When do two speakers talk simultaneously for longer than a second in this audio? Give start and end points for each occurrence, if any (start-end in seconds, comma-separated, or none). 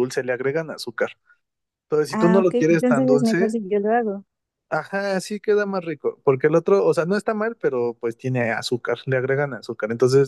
2.1-3.6